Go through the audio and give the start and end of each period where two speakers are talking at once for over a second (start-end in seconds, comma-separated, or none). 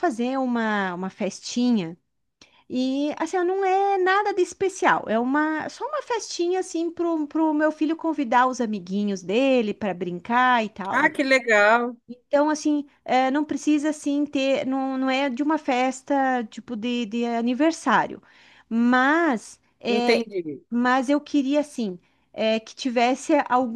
none